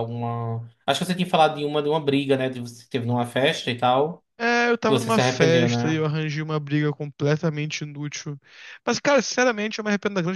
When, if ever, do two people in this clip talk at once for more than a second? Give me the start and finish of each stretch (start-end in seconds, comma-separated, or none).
4.8-6.0